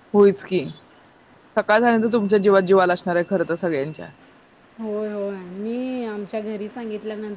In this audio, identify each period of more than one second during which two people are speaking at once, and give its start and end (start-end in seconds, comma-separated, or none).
none